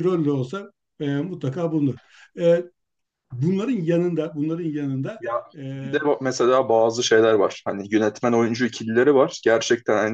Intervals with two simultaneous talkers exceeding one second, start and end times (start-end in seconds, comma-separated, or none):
none